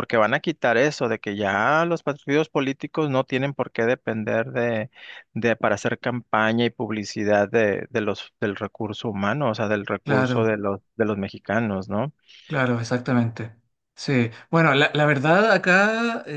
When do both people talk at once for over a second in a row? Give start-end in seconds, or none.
none